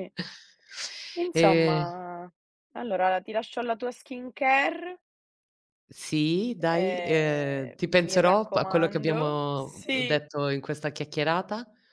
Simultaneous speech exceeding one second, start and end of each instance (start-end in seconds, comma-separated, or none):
6.6-10.2